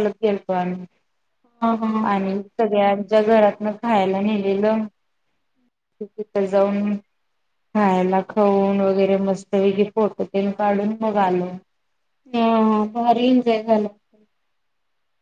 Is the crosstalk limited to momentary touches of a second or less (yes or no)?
yes